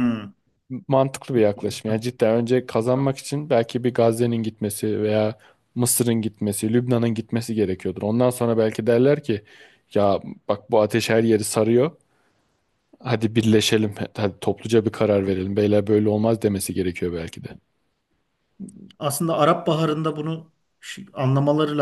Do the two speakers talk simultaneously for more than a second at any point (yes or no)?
no